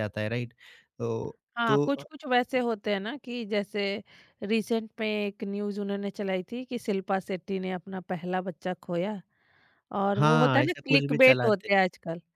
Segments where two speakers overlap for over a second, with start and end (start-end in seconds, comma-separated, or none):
10.2-11.7